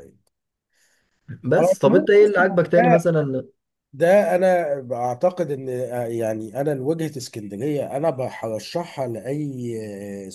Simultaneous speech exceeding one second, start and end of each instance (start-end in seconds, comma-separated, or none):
1.6-3.0